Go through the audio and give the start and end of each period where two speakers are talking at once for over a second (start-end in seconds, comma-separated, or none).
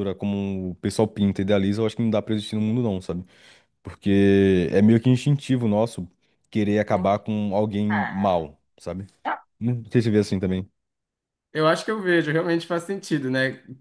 none